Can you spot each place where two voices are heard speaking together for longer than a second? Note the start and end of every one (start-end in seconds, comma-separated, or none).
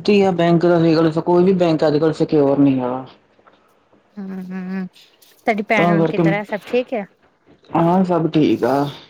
none